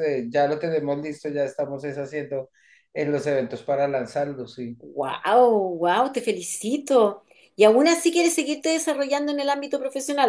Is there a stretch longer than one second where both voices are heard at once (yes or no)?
no